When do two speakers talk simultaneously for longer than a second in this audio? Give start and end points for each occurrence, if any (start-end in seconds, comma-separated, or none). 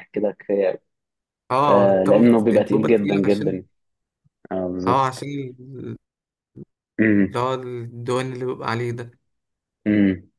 1.7-3.6